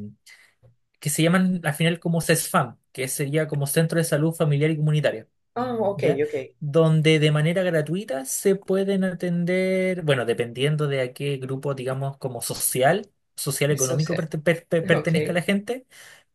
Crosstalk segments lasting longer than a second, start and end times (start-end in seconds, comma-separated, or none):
none